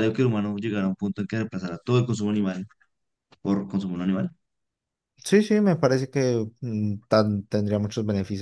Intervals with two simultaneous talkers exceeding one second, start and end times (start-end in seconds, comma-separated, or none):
none